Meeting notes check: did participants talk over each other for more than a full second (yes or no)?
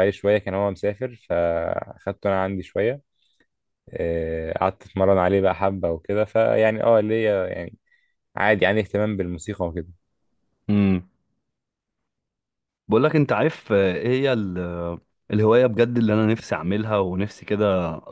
no